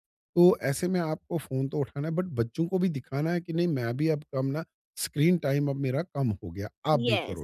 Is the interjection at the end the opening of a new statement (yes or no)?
yes